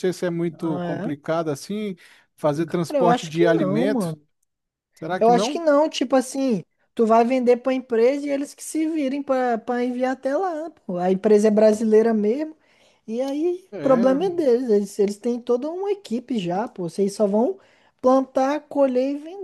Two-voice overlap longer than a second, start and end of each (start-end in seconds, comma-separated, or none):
2.6-4.2